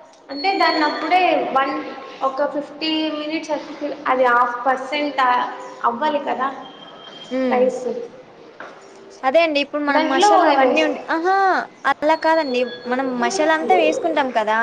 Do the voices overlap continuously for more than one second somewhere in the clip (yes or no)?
no